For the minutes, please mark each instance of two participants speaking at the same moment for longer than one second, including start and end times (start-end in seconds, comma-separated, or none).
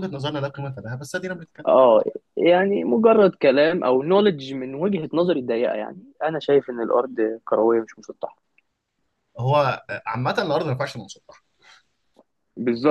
none